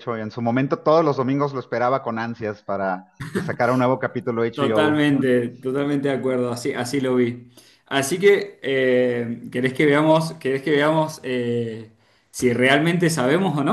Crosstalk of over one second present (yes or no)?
no